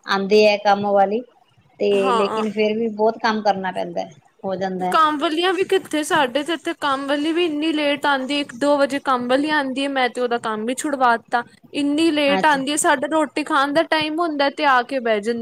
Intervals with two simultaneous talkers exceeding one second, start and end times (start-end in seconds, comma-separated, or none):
none